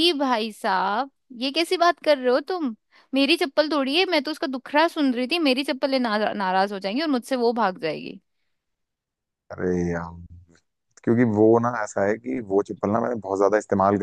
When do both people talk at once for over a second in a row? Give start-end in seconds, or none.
none